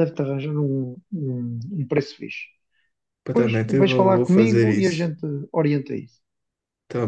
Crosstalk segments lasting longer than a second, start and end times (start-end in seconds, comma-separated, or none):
3.3-5.1